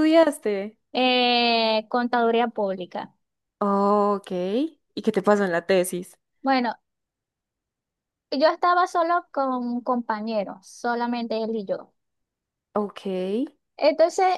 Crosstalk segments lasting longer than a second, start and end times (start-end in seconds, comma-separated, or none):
none